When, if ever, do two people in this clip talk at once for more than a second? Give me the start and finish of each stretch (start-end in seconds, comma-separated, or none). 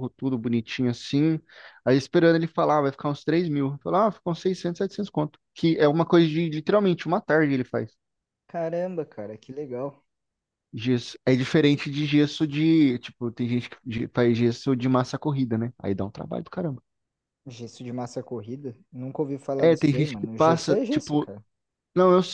19.6-21.3